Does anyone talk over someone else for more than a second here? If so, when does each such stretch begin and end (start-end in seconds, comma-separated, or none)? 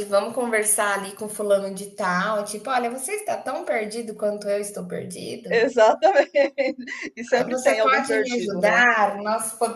7.5-8.9